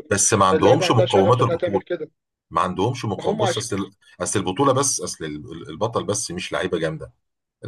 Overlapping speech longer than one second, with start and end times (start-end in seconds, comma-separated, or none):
0.5-1.8